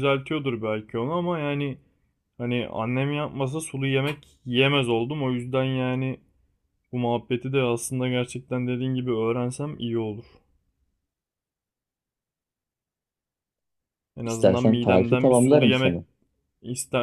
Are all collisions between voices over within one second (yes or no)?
no